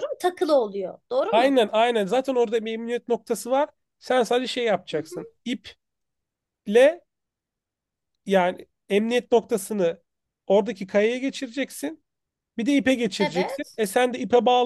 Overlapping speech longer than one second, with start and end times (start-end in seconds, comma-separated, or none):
none